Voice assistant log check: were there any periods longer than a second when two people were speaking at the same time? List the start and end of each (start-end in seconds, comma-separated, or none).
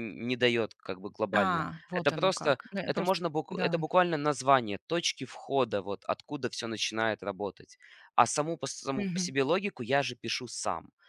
1.4-3.8